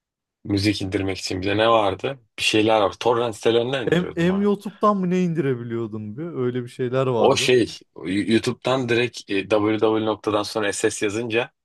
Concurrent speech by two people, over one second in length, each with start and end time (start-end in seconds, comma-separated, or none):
none